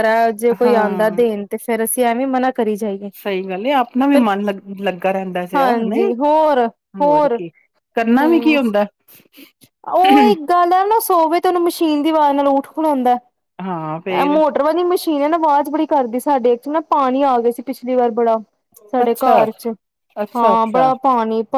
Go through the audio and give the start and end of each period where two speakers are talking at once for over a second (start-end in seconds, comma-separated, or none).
none